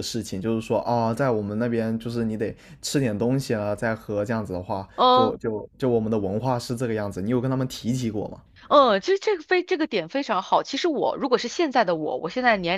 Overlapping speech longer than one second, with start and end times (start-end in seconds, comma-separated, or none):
none